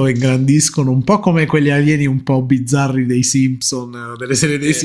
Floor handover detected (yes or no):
no